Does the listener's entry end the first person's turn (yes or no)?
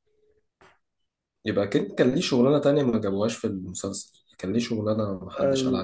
yes